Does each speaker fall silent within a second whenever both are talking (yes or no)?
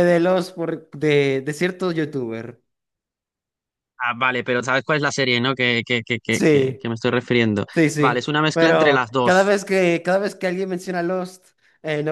no